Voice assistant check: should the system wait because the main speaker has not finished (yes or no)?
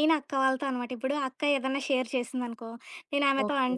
yes